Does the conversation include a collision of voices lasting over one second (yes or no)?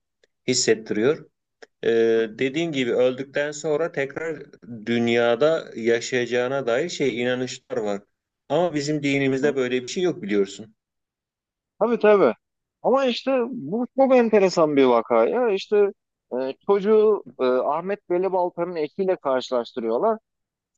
no